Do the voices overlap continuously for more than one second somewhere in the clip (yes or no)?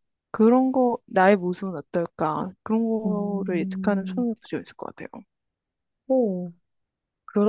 yes